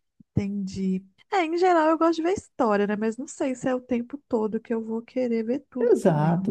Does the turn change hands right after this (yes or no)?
yes